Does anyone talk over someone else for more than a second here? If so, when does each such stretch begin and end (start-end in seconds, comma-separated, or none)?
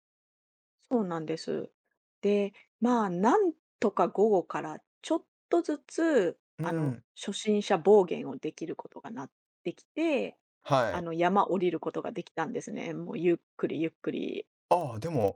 none